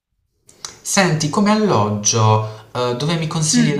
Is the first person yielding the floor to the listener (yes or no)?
no